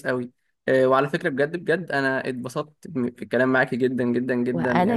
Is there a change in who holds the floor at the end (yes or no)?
yes